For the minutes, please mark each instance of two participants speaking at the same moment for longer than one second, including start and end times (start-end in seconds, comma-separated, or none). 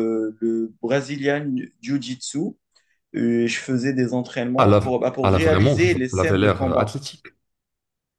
4.5-6.9